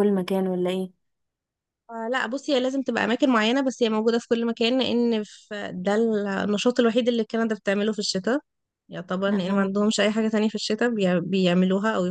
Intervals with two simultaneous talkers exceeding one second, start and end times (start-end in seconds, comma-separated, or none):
none